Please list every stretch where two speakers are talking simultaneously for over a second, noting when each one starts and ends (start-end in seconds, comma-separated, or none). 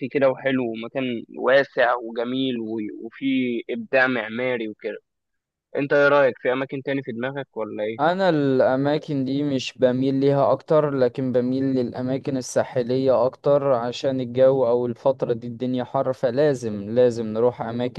none